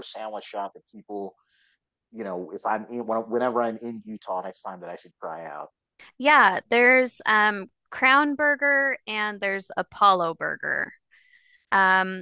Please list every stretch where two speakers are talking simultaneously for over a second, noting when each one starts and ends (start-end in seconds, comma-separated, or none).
none